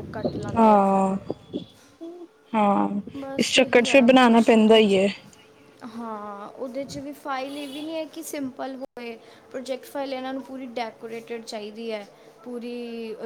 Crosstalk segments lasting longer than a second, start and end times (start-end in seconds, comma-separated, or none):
3.4-5.0